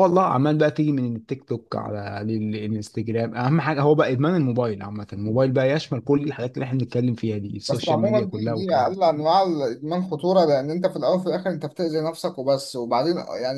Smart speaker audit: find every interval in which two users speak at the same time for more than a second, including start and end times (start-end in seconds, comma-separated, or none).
7.7-9.0